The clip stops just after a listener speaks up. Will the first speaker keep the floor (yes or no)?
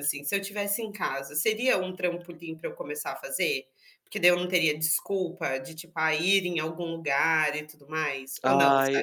no